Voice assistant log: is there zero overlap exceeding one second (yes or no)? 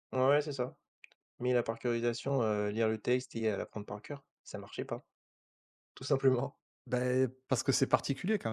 yes